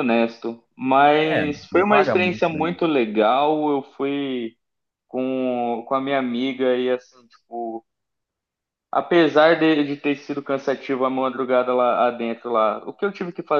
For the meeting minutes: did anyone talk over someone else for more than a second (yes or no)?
yes